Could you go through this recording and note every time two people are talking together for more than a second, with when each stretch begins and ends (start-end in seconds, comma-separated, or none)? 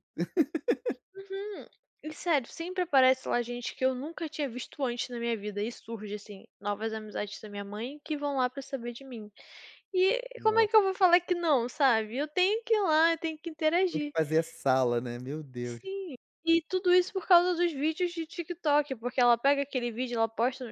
none